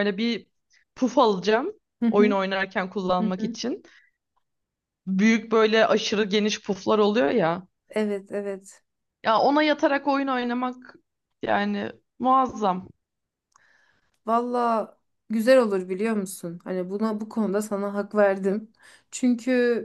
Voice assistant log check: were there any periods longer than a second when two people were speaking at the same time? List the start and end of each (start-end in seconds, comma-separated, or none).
none